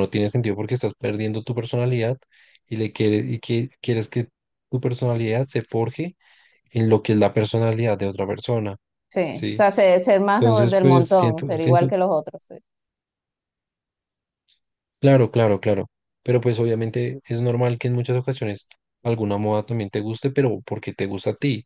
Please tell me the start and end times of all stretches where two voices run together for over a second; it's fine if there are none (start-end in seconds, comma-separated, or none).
10.4-11.9